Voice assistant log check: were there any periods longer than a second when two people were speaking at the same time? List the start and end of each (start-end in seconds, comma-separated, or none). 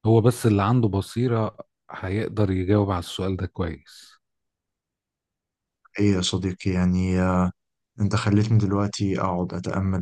none